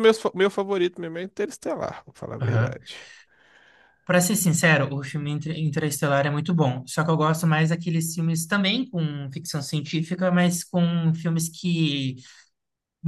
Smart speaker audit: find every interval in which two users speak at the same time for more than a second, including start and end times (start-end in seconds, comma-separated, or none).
none